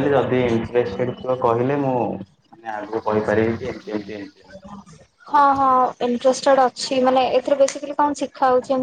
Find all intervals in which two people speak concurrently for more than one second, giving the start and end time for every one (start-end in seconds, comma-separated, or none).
none